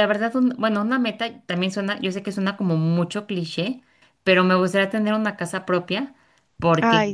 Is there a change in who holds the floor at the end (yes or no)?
no